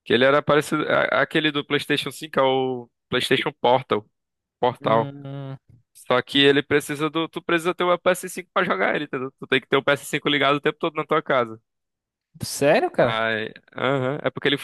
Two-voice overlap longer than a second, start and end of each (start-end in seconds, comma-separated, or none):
none